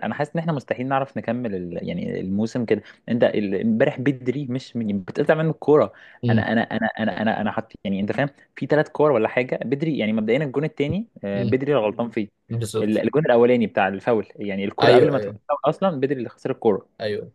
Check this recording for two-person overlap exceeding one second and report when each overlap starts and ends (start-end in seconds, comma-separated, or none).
none